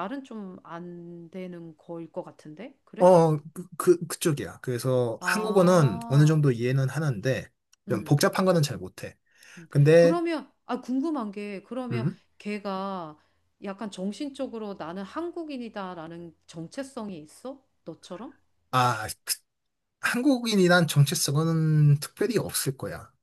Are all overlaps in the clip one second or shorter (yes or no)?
no